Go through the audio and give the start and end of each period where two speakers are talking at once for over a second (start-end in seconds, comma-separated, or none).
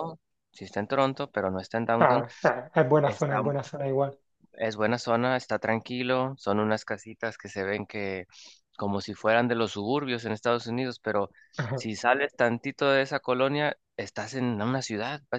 none